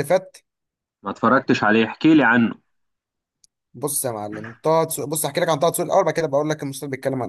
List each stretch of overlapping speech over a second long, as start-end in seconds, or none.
none